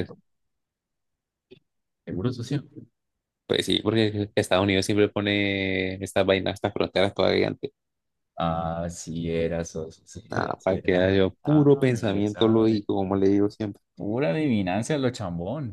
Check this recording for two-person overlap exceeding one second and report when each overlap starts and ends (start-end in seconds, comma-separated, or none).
10.3-12.8